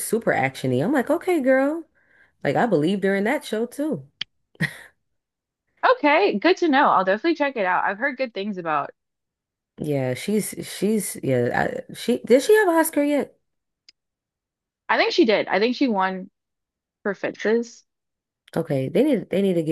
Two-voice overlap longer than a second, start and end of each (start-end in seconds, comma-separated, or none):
none